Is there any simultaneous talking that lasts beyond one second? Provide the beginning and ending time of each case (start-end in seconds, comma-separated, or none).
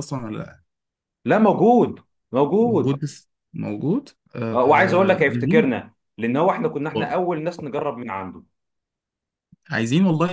4.5-5.8